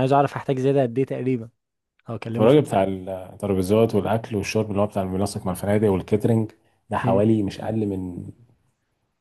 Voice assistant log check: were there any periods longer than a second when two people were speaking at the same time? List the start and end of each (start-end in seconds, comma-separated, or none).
none